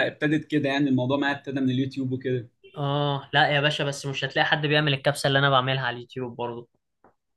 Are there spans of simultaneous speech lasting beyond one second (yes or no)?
no